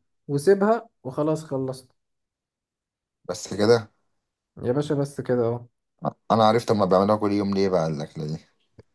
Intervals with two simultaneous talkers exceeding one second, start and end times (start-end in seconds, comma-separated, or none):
none